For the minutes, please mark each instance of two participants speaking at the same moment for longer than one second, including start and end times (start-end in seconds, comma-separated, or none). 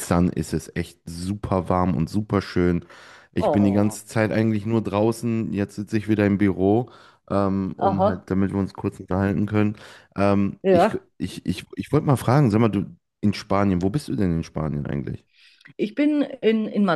none